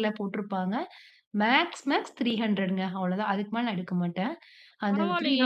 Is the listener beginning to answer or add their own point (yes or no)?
yes